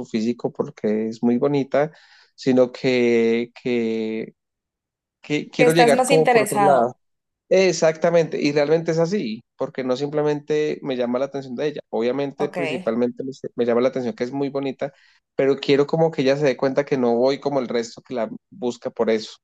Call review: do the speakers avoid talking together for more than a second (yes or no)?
no